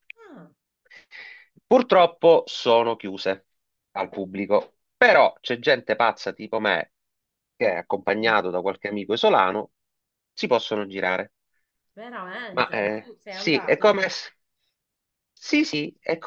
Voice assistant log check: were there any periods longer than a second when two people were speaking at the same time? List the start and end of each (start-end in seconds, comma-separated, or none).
12.5-14.1